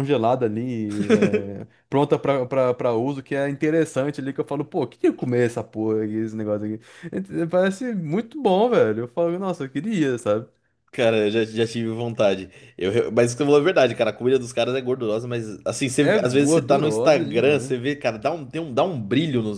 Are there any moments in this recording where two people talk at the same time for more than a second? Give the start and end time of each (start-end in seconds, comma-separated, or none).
16.0-17.7